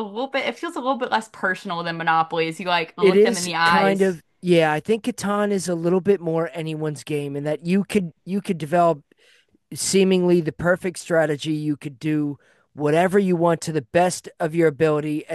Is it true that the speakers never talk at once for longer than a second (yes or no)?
no